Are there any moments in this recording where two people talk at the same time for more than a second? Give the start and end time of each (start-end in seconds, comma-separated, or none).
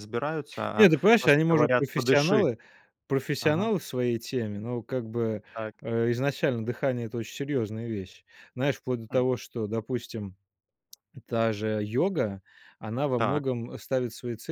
0.8-2.5